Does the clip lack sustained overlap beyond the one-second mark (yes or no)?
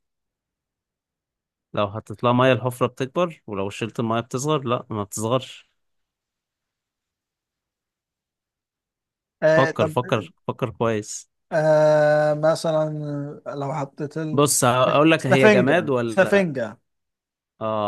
no